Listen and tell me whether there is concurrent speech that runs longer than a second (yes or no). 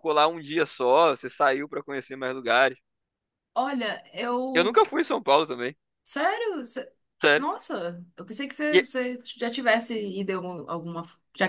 no